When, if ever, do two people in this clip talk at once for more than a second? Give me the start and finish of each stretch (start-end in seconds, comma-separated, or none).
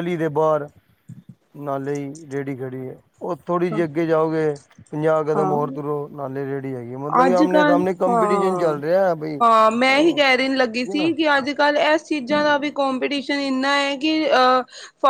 7.2-8.8, 9.9-11.1